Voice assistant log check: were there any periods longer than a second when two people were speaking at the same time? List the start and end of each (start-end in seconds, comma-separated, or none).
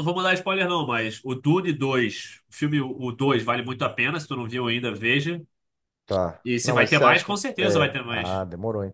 6.5-8.4